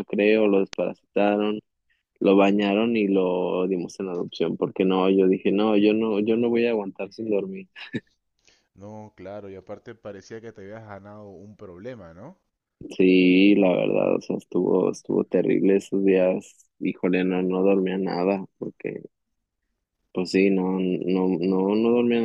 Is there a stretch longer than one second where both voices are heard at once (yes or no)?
no